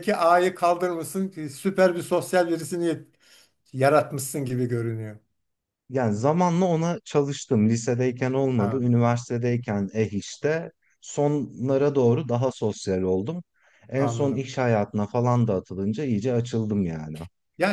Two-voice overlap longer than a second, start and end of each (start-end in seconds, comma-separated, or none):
none